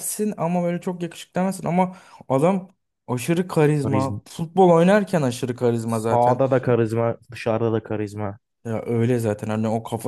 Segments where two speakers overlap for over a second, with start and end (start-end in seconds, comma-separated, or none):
none